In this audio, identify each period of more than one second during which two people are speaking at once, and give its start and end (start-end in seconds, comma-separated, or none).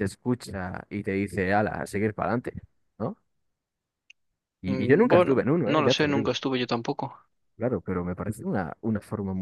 4.6-6.3